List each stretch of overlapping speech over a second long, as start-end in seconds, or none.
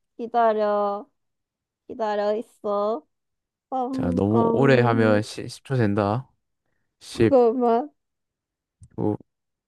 3.9-5.2